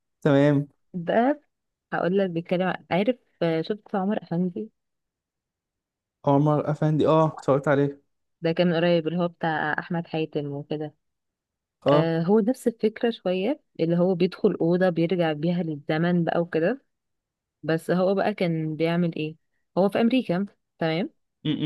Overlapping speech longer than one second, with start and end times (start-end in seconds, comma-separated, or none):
none